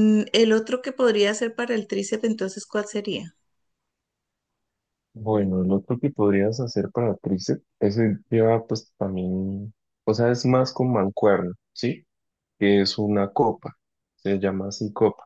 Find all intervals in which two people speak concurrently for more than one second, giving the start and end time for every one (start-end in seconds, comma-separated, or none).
none